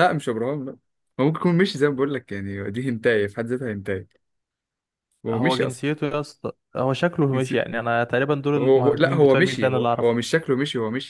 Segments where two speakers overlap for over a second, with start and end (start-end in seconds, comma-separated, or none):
8.6-10.2